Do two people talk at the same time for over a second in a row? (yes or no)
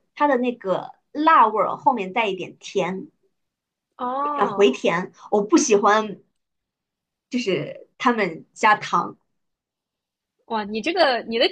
no